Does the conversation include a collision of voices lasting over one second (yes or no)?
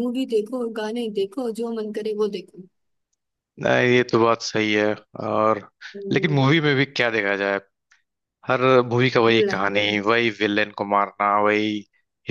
no